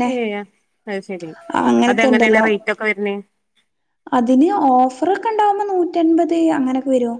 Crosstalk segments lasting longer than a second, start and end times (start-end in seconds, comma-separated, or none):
none